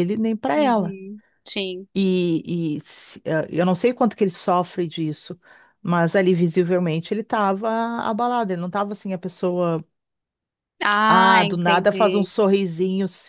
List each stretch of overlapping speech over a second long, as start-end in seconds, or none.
11.1-12.3